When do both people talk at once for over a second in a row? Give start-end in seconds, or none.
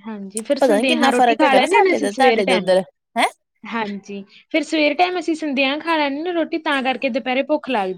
0.6-2.7